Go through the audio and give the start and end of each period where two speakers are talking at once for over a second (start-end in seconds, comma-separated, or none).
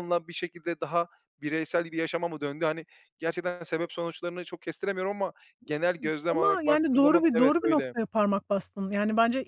6.3-7.9